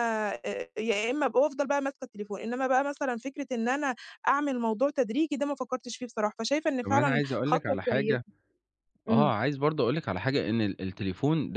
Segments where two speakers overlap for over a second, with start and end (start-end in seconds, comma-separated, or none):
6.8-8.2